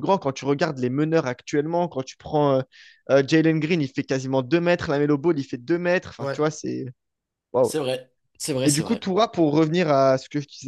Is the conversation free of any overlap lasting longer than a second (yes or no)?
yes